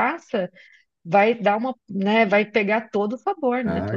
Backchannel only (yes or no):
no